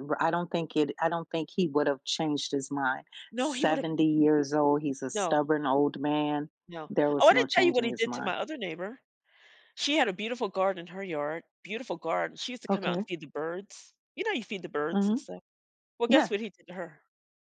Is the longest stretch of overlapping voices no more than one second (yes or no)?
no